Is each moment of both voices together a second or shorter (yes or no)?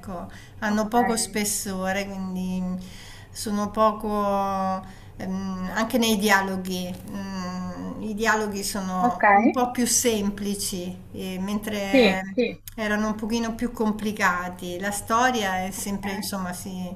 yes